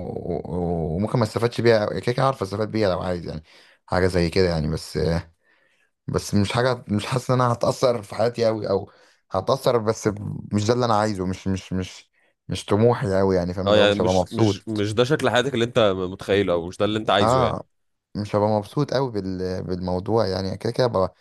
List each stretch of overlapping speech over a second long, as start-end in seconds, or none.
13.7-14.9